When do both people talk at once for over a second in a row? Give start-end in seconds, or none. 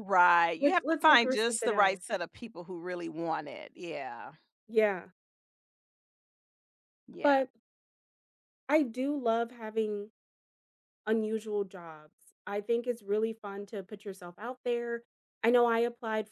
0.6-2.0